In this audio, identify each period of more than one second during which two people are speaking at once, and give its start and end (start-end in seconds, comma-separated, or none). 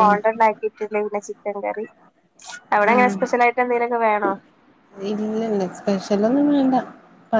none